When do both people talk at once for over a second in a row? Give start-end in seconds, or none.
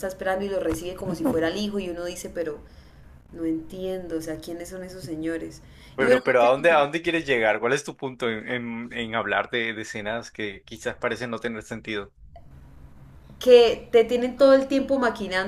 none